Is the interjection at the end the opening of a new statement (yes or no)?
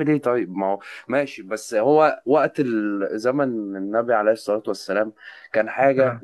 no